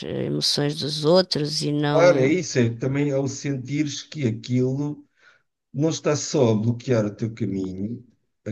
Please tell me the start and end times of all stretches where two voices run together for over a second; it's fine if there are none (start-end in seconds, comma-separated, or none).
none